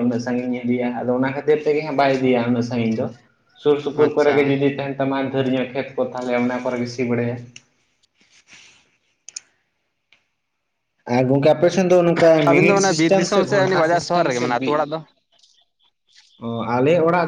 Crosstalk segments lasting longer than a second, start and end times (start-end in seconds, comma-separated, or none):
12.5-14.7